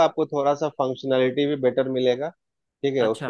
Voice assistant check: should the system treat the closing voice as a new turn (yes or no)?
no